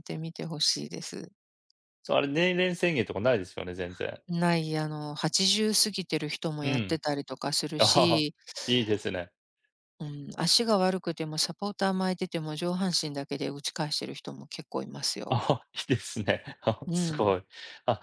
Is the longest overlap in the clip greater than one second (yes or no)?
no